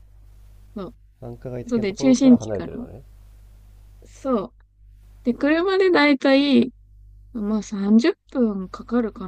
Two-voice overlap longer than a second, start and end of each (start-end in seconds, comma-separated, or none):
1.7-2.9